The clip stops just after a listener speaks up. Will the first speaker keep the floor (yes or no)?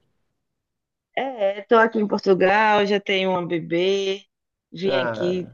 yes